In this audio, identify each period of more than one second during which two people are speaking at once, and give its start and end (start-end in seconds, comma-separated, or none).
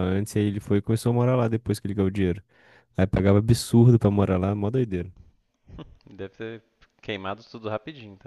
none